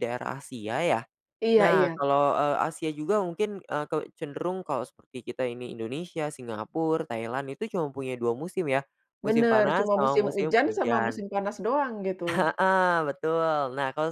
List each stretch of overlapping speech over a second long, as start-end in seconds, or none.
9.3-11.2